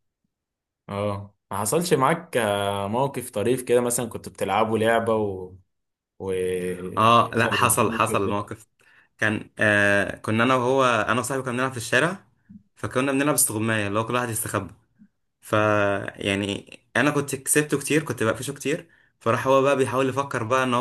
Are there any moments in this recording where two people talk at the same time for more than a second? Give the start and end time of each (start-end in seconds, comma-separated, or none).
7.0-8.4